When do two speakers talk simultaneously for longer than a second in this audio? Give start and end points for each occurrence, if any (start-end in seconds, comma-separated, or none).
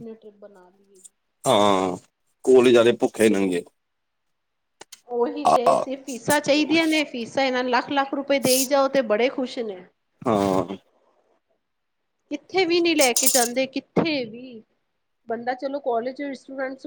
none